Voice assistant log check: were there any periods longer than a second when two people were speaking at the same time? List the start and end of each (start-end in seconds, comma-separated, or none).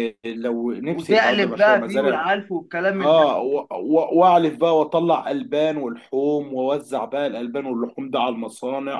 0.9-2.2